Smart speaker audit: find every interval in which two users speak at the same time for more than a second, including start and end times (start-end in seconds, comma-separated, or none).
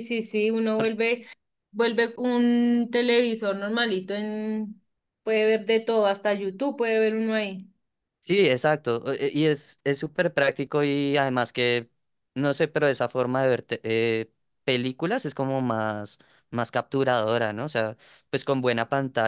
none